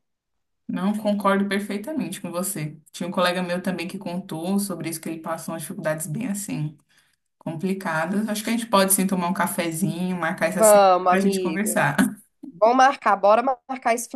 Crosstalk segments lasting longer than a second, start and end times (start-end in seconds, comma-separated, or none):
10.4-11.8